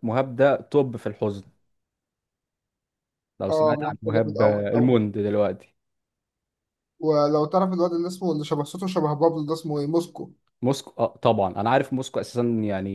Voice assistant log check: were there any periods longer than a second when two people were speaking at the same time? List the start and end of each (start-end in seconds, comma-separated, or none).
3.5-5.0